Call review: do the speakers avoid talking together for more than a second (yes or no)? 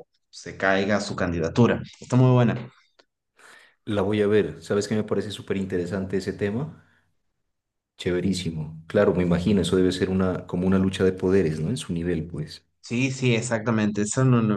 yes